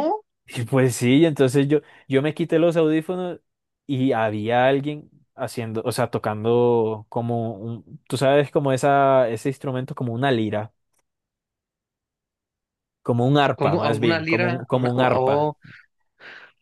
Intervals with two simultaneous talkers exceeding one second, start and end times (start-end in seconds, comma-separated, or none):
13.5-15.5